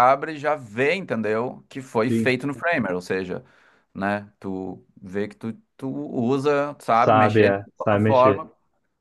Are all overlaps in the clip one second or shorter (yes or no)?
no